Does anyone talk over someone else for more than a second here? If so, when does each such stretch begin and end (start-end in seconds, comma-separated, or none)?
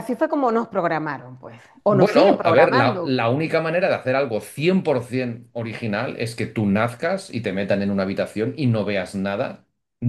1.9-3.2